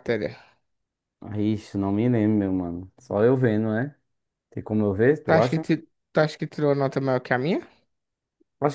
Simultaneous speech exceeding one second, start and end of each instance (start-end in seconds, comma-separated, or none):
none